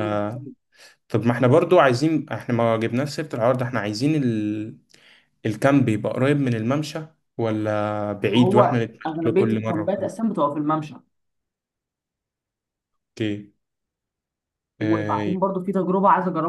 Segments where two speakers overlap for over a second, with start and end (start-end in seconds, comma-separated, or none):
8.4-10.2